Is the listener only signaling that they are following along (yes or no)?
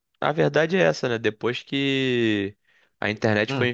yes